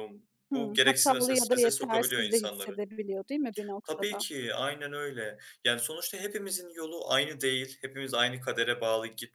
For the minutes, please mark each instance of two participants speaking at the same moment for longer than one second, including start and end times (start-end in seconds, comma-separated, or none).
0.5-2.8